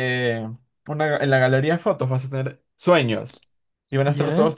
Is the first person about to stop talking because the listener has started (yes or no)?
no